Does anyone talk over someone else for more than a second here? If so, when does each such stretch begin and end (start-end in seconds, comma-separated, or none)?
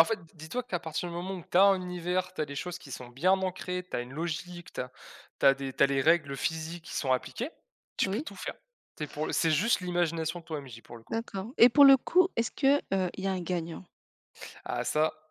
none